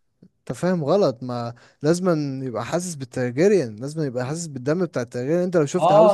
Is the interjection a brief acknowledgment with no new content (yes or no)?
no